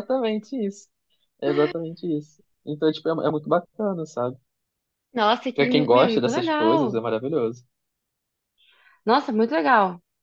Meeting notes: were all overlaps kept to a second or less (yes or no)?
no